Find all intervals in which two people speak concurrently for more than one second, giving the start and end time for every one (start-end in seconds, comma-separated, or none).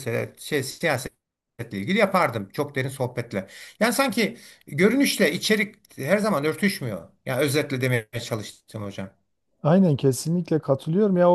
none